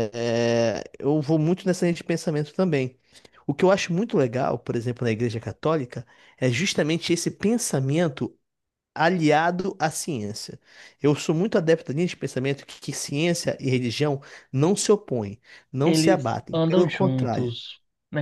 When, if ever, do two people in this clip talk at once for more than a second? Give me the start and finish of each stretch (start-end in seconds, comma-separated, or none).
15.8-17.5